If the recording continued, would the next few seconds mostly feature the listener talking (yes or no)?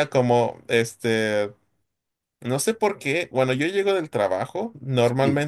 no